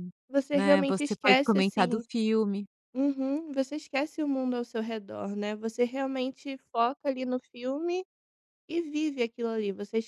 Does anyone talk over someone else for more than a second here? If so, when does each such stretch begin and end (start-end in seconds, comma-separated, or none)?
0.5-2.1